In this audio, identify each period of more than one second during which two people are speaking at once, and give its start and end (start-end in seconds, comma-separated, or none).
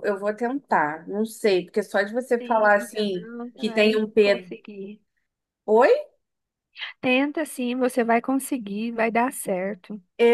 2.4-4.5